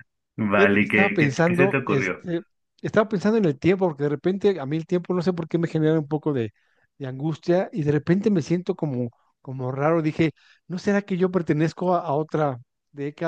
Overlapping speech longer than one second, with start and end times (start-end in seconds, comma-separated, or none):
0.6-2.2